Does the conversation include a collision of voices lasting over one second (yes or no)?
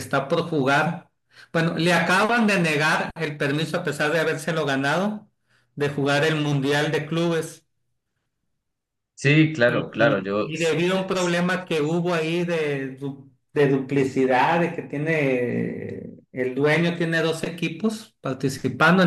yes